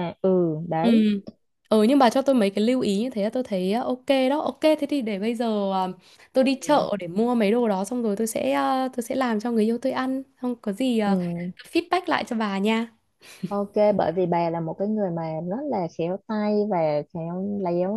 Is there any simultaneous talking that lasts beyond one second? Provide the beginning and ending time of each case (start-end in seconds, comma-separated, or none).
none